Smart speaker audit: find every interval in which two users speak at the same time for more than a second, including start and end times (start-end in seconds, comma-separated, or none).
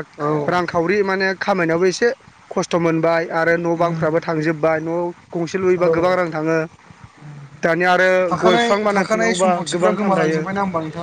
8.4-10.4